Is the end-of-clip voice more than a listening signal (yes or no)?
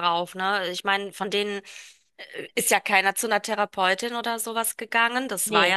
no